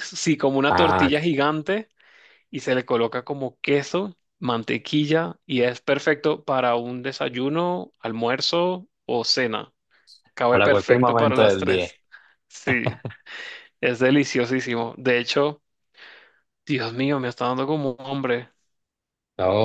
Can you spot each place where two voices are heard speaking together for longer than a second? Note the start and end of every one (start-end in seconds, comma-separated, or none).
10.5-11.9